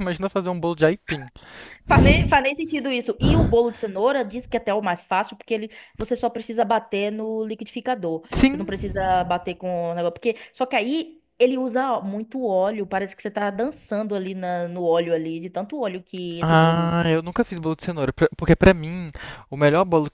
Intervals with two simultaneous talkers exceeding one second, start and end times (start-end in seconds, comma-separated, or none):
none